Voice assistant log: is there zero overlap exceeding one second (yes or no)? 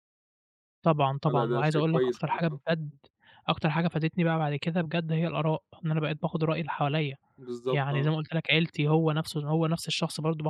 no